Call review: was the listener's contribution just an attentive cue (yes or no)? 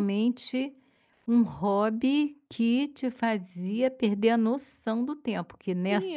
no